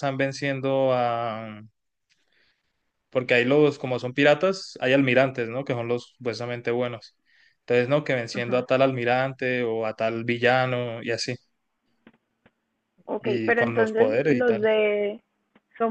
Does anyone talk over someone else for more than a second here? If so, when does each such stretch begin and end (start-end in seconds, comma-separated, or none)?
13.2-14.7